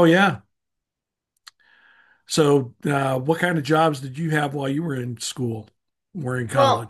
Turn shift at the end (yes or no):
yes